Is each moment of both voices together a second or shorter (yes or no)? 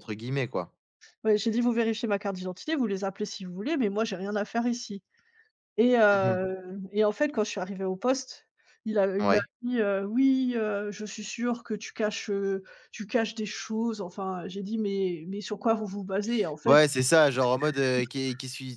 yes